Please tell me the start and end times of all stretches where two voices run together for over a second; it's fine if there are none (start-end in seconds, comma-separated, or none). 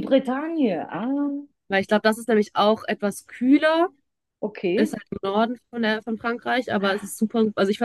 none